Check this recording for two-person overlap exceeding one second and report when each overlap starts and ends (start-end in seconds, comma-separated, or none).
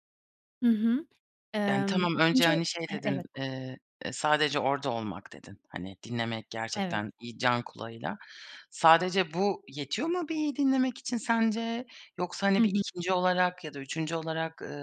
1.7-3.2